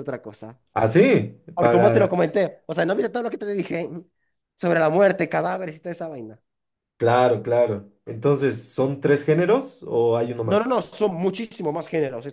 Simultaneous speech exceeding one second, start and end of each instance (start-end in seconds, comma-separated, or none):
none